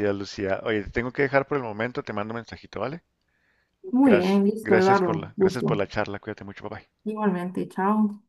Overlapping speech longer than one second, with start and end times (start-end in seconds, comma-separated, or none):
4.0-5.8